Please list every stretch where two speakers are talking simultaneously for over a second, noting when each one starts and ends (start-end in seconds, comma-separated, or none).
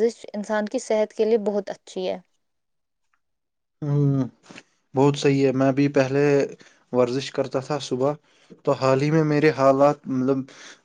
none